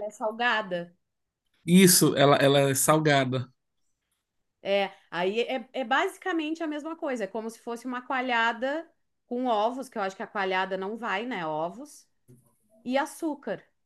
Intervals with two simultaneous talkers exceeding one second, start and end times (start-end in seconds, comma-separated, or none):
none